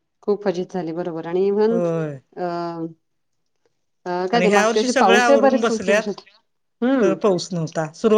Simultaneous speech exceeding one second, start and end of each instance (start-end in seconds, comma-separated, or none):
4.3-6.1